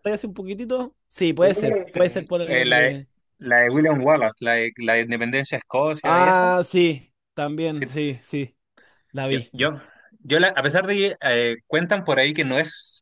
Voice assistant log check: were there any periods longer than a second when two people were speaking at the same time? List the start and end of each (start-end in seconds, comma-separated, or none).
1.4-3.0